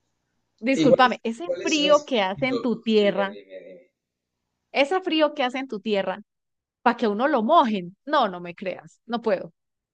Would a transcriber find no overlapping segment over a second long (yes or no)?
no